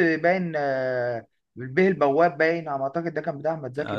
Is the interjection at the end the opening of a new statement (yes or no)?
yes